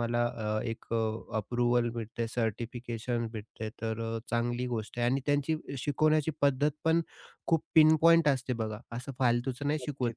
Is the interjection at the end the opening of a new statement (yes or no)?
no